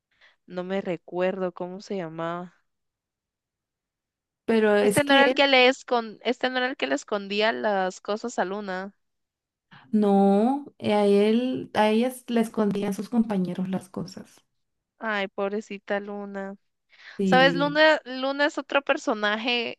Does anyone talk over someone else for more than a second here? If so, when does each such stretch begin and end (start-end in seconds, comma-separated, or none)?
none